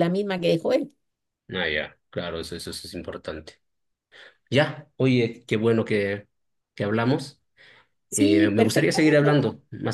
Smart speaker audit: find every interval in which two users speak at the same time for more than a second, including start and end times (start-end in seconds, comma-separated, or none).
8.1-9.3